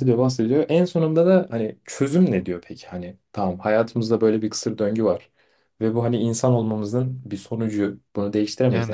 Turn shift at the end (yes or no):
no